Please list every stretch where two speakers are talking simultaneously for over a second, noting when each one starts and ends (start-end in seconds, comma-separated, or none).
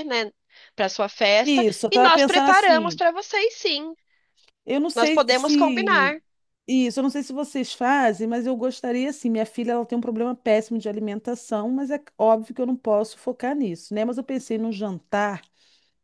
1.4-3.0, 4.9-6.2